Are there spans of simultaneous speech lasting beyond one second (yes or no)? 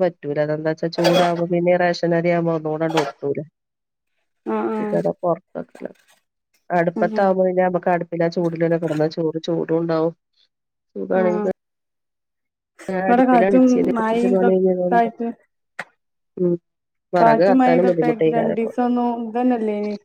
yes